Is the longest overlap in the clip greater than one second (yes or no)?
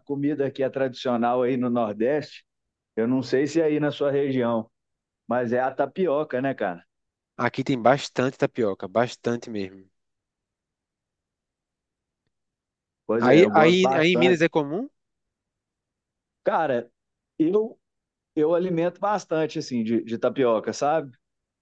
yes